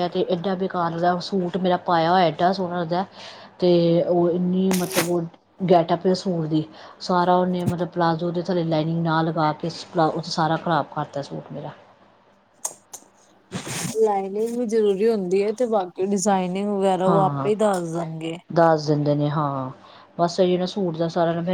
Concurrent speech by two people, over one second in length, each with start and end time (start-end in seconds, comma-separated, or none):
none